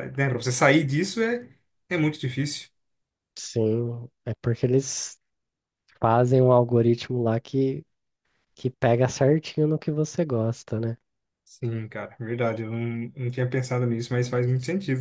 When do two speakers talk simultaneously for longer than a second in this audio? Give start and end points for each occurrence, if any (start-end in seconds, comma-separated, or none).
none